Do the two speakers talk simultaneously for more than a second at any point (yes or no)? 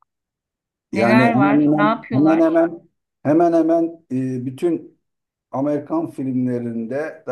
yes